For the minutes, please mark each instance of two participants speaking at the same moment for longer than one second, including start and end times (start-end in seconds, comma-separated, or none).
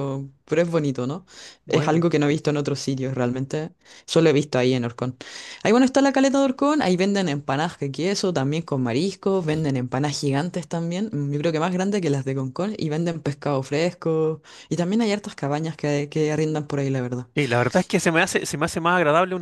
none